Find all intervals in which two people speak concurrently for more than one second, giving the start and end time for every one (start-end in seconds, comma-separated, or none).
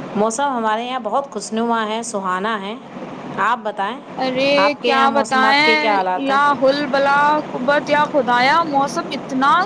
none